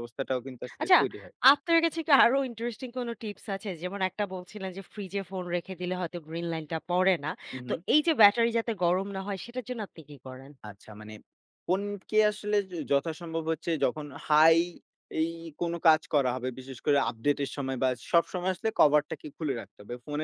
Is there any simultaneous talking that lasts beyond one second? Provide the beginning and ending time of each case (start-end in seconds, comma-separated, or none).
none